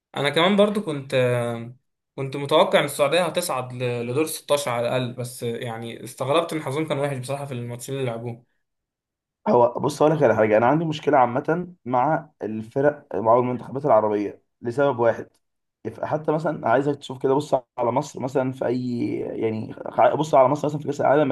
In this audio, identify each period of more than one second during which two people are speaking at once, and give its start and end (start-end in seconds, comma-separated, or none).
none